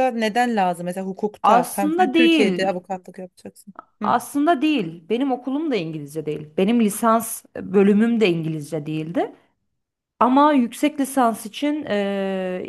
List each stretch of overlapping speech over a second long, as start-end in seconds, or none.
1.4-2.8